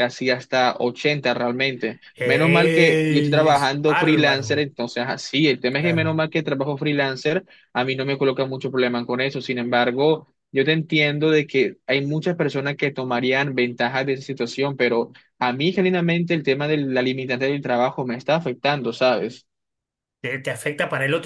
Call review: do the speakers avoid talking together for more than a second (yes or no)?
no